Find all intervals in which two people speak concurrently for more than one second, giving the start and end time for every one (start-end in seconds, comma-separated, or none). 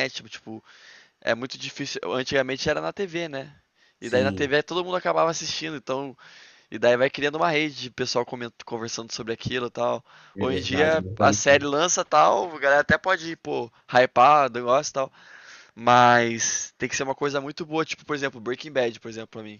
10.3-11.7